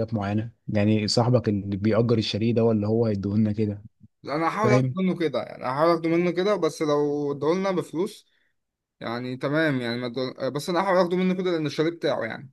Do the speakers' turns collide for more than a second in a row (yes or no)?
no